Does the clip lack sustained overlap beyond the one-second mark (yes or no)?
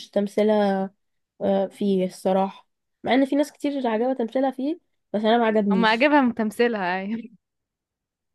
yes